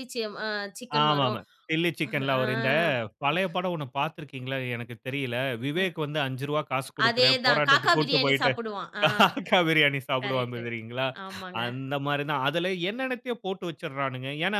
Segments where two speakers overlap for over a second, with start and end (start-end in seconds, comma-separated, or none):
7.0-8.5